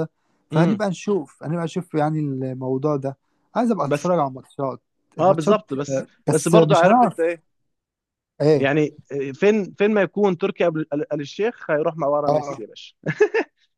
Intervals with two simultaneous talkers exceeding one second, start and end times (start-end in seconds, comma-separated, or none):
5.2-7.4